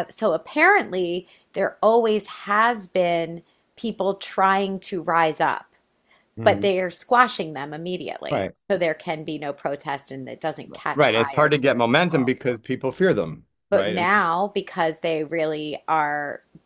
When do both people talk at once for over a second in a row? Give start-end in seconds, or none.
10.7-12.3